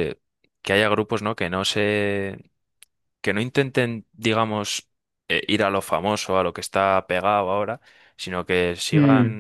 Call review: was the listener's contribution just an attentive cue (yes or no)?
yes